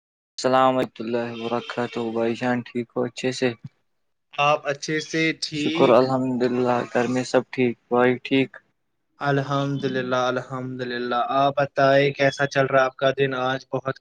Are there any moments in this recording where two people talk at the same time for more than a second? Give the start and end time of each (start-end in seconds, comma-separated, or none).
none